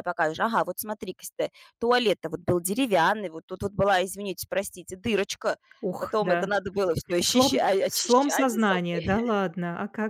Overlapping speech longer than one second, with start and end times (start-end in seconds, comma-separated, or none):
7.2-9.2